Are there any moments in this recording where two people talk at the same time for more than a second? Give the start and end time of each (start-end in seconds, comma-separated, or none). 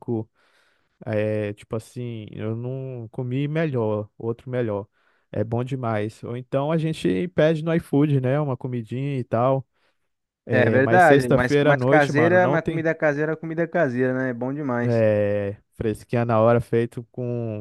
10.5-12.8